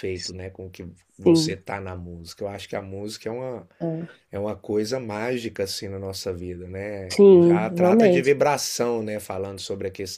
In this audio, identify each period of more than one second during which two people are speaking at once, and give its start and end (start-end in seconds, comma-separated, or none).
7.1-8.5